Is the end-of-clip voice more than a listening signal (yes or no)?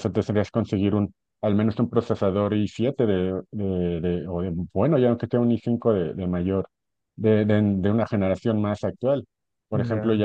no